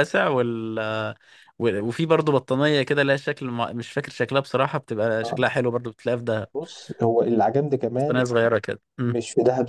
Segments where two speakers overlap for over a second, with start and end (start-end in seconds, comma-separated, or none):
none